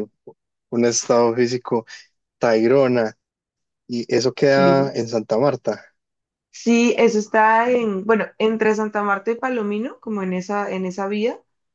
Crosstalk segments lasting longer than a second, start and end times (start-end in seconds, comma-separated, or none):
none